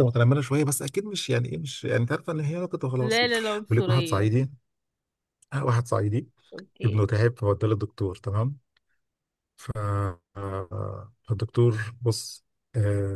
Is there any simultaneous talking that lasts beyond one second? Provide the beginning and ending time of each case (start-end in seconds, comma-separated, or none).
3.0-4.3